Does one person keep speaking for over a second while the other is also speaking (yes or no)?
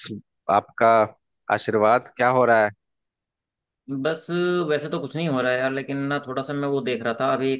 no